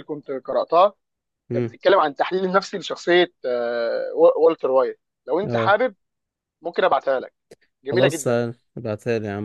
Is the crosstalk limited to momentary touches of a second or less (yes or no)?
yes